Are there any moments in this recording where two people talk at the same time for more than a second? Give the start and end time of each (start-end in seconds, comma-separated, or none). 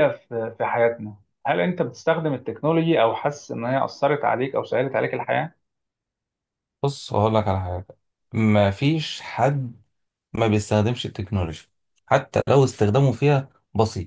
none